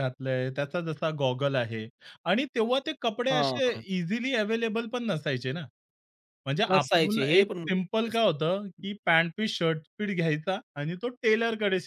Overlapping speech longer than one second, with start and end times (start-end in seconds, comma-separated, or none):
6.7-8.2